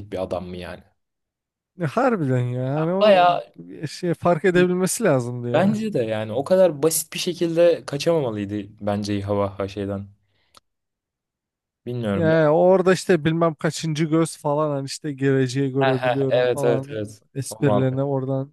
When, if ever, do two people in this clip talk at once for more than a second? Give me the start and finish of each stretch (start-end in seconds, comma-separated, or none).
15.8-18.0